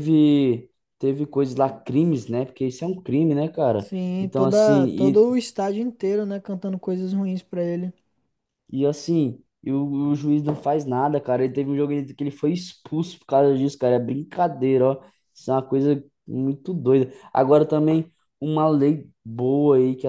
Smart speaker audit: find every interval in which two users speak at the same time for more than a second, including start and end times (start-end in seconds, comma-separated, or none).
3.8-5.3